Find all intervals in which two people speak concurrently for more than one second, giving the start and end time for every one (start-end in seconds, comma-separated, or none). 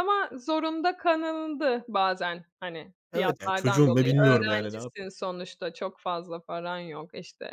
3.1-4.9